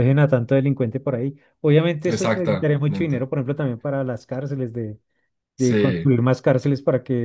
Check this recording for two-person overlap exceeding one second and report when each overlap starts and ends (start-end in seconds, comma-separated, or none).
2.1-3.3